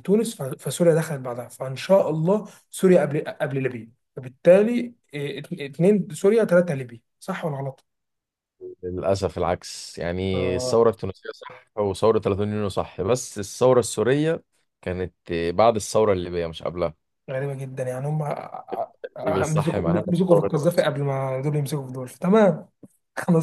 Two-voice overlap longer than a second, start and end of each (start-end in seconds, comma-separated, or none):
19.2-20.5